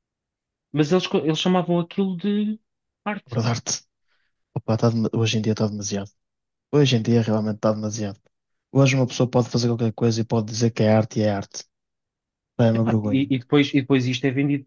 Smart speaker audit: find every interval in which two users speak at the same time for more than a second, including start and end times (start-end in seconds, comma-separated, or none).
none